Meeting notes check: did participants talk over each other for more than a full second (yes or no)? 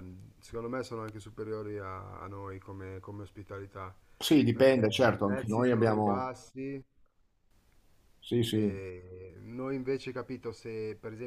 yes